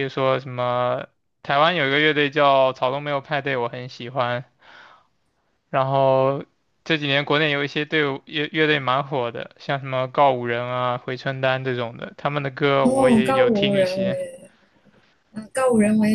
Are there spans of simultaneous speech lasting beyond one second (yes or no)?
yes